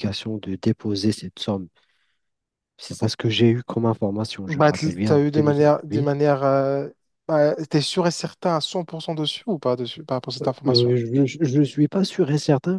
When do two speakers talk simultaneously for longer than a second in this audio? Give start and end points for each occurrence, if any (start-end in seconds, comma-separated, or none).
4.5-6.1